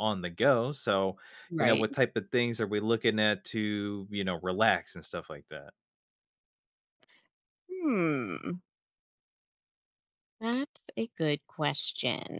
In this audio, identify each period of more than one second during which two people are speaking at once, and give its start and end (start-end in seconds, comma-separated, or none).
none